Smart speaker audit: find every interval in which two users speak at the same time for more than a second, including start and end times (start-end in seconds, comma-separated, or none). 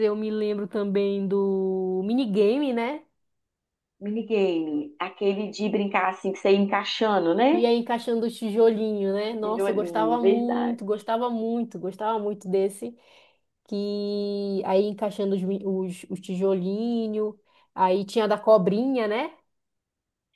9.4-10.8